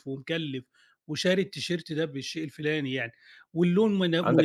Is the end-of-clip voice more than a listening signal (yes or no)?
yes